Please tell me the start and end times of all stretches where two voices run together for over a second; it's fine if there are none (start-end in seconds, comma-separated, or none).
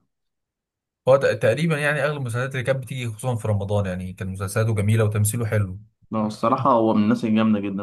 none